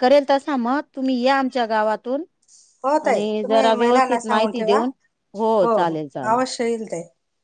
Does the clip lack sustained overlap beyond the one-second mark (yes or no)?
no